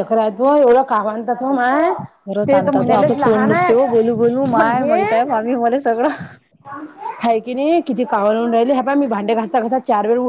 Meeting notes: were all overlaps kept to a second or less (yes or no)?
no